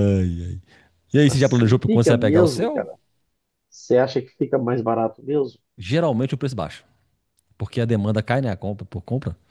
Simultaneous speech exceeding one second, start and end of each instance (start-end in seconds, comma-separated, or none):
1.3-2.9